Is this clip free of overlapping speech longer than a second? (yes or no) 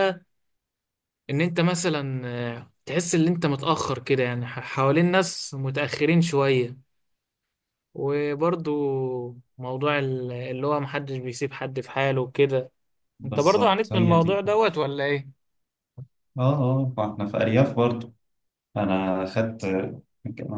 no